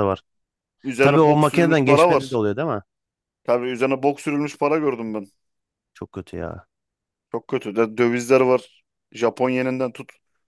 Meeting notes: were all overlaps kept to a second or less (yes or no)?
no